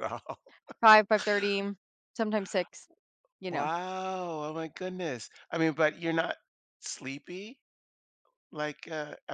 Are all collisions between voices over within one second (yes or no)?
yes